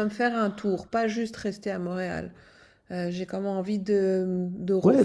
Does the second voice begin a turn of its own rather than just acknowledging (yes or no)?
yes